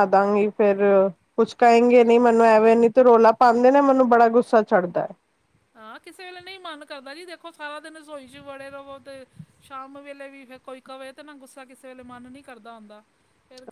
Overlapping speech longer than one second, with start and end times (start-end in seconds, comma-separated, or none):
none